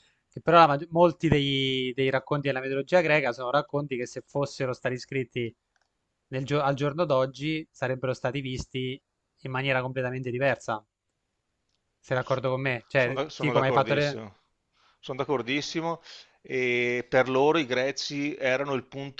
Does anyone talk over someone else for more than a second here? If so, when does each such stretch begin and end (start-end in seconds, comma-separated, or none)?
12.9-14.2